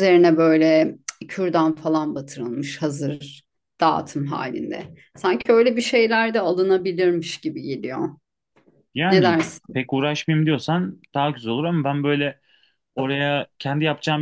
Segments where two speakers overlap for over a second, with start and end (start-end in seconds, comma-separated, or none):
none